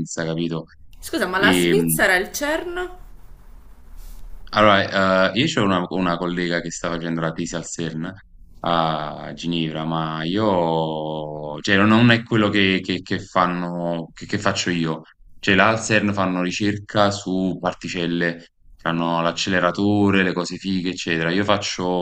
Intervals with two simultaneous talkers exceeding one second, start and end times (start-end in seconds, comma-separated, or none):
none